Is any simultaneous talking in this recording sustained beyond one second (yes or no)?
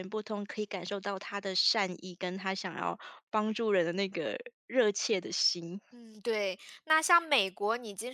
no